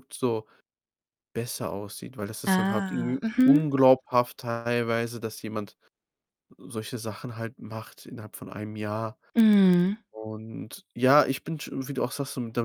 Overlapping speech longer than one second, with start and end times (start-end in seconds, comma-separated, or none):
2.5-3.7